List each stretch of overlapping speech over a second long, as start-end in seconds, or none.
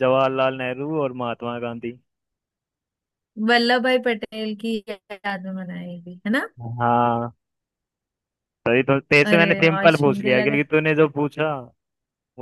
9.2-10.6